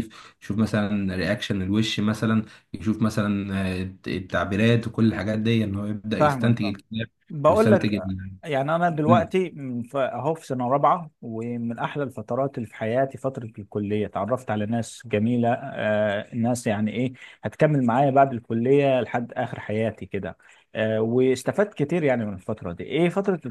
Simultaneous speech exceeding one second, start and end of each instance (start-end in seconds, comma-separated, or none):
none